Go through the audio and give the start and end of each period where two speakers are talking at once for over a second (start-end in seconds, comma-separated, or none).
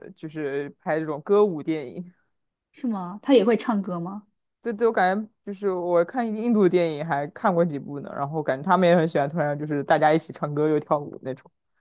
none